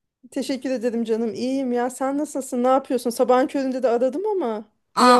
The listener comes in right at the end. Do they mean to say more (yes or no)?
yes